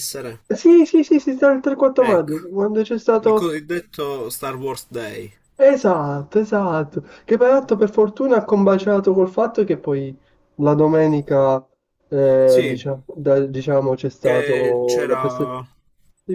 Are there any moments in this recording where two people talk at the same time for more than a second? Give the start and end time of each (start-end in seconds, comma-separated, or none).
14.2-15.6